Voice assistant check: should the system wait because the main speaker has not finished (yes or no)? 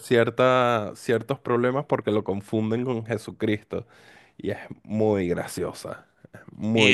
no